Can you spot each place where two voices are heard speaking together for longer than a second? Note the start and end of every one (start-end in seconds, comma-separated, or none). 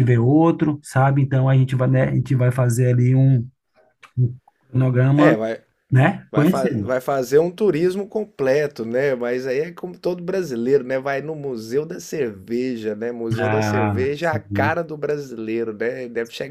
13.4-14.8